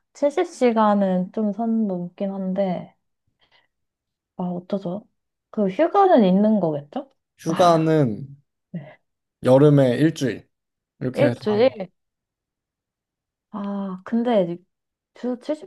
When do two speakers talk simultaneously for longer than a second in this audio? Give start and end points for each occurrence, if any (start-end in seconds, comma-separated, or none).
none